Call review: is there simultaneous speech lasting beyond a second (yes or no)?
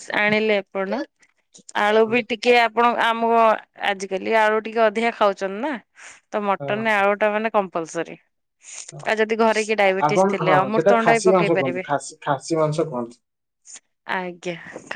yes